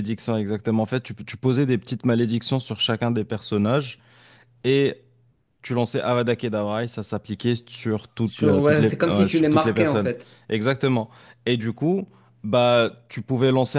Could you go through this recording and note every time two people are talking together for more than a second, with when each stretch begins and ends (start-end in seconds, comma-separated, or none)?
8.2-10.1